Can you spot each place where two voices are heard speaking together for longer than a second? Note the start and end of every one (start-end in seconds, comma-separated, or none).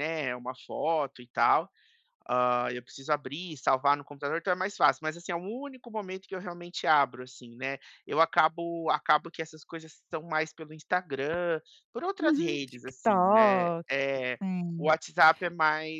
12.2-13.8